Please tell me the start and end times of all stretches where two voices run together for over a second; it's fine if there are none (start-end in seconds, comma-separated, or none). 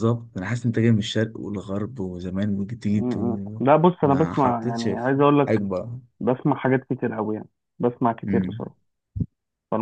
2.9-5.6